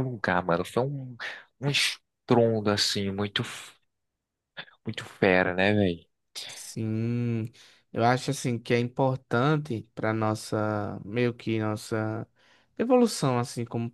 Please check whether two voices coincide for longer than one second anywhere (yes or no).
no